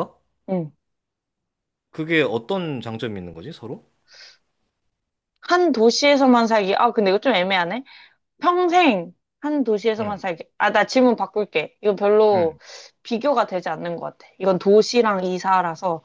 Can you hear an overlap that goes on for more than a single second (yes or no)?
no